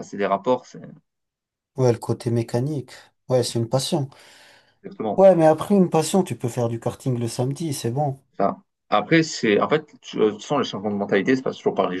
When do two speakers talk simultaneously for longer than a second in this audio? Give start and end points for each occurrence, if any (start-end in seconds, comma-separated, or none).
none